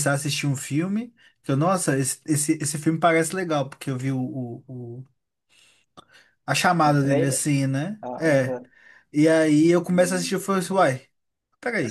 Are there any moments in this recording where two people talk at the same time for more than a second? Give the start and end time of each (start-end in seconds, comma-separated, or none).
none